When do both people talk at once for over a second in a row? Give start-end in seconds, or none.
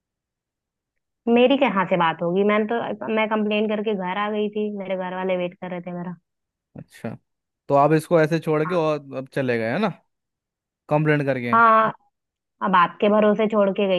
none